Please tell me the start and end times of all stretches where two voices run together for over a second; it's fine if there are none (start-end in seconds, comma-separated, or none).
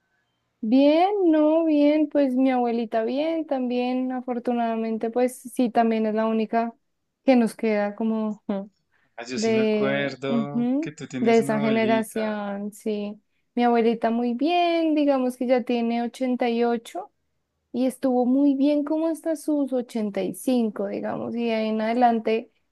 9.3-12.4